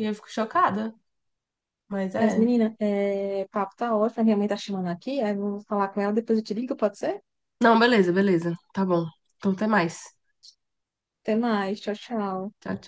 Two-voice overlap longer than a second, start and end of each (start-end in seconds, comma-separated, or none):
none